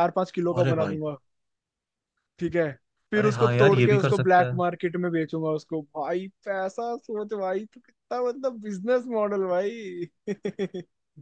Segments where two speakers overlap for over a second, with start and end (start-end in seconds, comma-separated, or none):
3.1-4.6